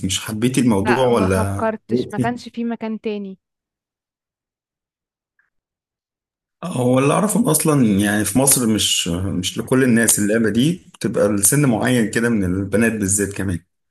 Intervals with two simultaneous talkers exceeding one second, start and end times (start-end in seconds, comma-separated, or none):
0.9-2.3